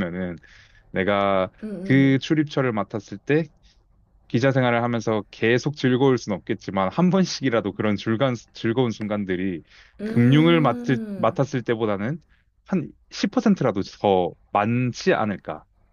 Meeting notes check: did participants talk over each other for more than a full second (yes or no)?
yes